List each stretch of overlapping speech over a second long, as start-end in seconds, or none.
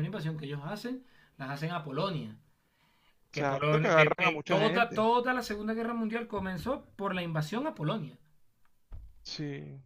3.3-5.1